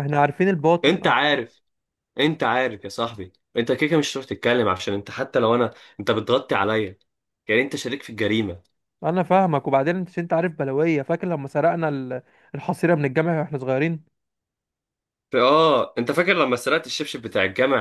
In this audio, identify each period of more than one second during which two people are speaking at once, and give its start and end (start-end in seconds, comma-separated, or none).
none